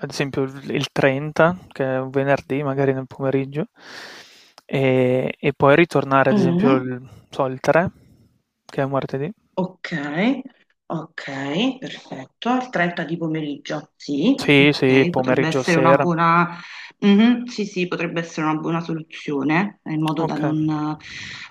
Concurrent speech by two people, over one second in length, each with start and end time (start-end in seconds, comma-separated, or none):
14.4-16.1